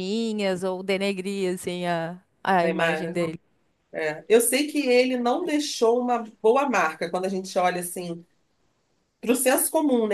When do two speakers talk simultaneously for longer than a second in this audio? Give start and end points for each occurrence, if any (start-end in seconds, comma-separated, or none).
none